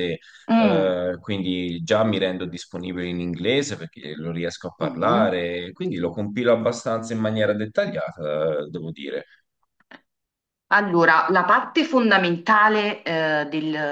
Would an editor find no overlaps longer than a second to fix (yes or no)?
yes